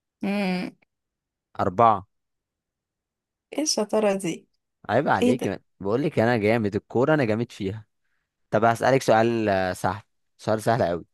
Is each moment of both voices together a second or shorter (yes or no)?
yes